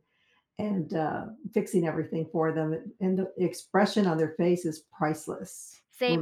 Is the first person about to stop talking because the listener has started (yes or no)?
yes